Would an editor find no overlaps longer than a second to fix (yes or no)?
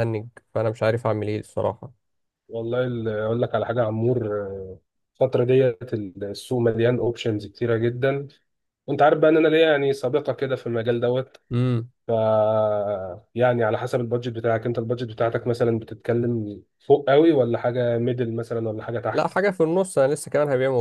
yes